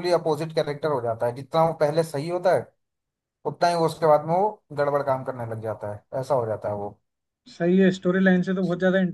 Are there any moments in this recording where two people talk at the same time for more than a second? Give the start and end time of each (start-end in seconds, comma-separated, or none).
none